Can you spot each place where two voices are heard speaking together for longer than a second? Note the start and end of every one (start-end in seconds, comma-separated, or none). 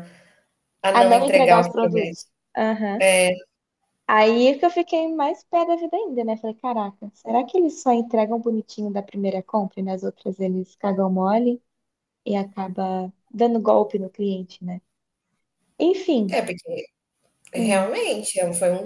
0.9-2.2